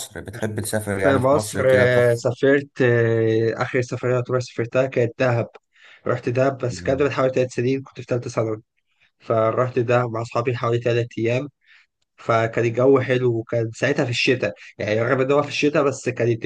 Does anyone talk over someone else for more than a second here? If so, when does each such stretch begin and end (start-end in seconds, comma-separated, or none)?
0.9-2.2